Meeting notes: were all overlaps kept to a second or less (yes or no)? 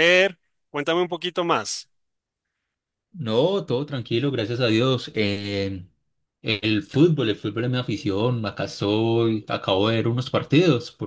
yes